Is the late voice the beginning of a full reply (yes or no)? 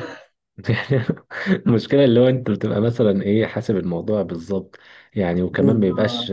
no